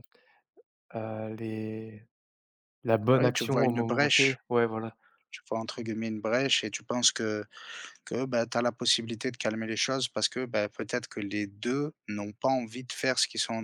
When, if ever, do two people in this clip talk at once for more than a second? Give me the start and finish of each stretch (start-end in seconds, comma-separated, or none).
3.1-4.4